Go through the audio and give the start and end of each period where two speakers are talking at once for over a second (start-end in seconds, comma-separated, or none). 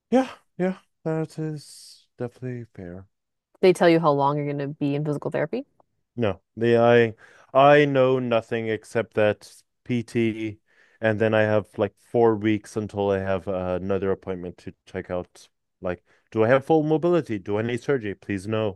none